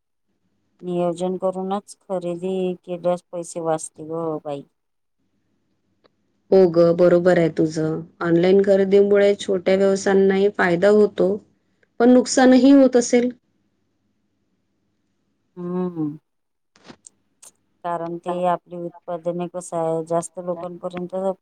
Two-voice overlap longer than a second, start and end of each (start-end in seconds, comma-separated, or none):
none